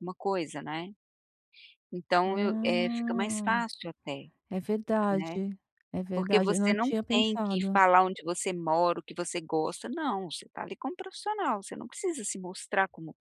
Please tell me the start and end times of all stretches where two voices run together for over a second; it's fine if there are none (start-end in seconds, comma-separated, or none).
2.3-3.5, 6.1-7.8